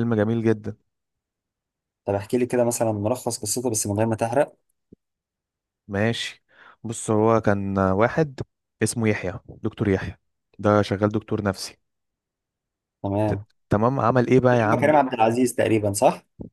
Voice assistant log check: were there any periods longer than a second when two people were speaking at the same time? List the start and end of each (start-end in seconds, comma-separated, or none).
none